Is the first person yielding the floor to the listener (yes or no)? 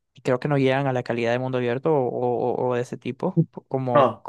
yes